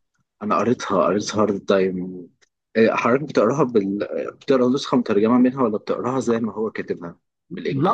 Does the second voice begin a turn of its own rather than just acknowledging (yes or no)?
yes